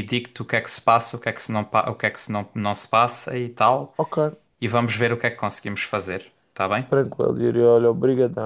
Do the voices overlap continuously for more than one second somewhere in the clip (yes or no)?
no